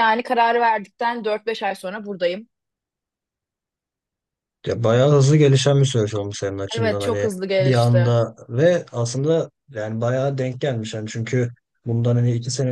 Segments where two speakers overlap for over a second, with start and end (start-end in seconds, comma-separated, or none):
6.8-8.2